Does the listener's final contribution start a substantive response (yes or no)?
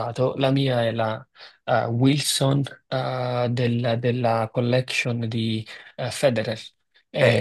no